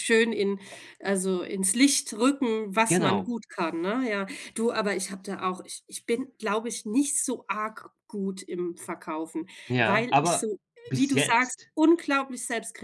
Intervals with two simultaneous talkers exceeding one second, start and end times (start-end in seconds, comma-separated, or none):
9.7-11.7